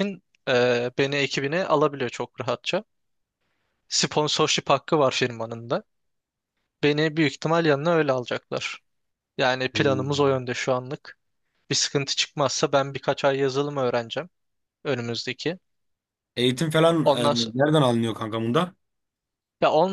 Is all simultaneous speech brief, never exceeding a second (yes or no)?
yes